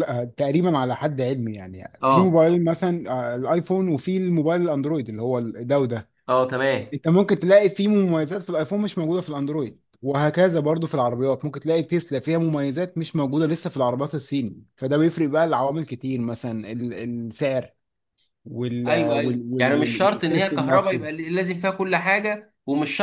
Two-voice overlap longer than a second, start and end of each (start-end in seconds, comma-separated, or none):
18.9-21.1